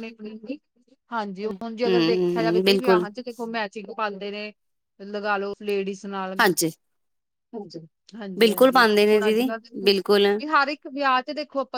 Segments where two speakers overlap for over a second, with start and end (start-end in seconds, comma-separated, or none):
1.4-3.0, 8.4-10.2